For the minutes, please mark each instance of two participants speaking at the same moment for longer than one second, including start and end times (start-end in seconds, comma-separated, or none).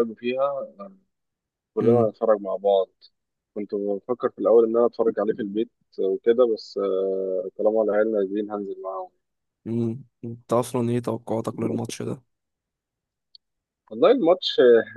none